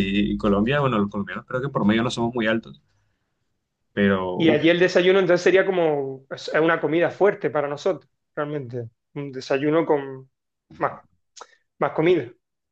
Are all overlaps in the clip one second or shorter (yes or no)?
yes